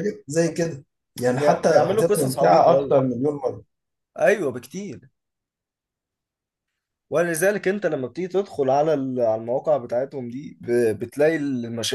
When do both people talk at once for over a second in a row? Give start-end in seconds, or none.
1.3-3.0